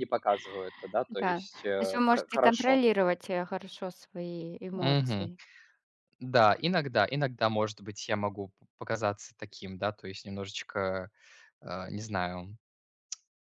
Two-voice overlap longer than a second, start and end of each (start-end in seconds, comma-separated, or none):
1.1-2.8